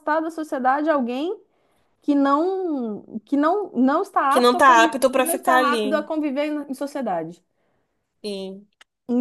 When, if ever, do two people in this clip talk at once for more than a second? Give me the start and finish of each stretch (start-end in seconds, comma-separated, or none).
4.3-6.1